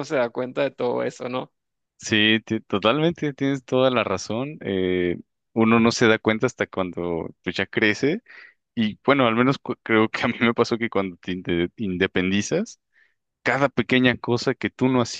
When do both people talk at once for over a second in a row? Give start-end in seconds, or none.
none